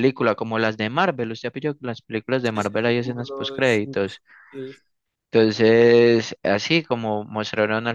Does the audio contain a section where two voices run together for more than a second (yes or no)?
yes